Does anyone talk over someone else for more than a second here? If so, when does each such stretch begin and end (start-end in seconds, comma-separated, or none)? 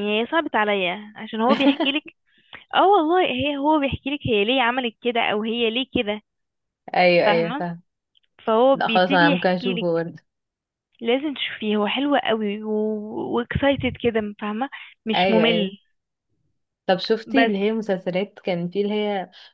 8.7-10.1